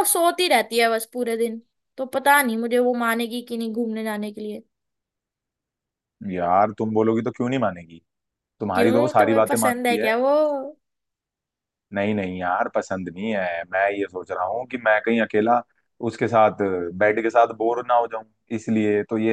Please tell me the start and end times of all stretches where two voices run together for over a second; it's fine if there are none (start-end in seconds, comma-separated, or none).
8.8-10.1